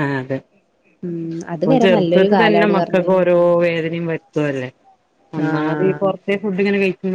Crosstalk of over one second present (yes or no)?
yes